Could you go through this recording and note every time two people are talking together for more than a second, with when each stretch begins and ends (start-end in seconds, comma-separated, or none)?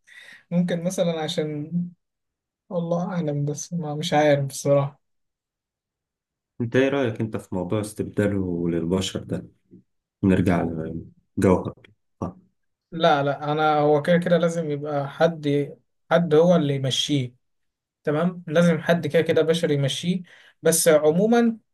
none